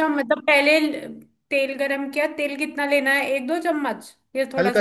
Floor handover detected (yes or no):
yes